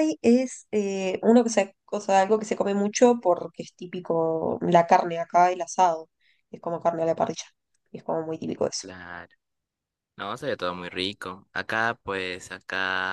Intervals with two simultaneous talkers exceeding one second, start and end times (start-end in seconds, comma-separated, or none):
none